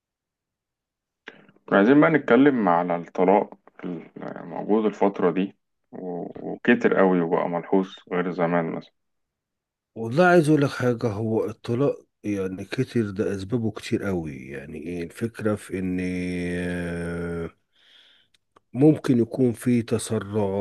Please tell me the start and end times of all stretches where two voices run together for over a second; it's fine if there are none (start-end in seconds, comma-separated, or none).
none